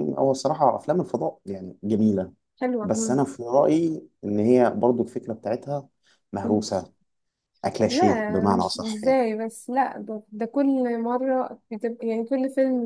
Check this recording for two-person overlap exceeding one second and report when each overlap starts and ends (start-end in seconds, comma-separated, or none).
7.9-9.2